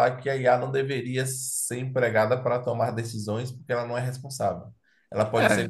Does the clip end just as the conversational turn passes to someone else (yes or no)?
no